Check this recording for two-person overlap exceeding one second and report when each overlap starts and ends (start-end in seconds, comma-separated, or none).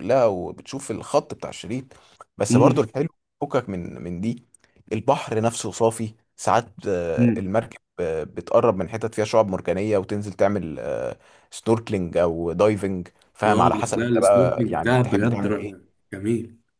13.5-15.9